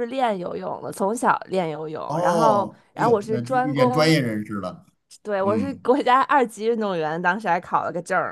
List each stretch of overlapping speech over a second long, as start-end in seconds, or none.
2.0-4.1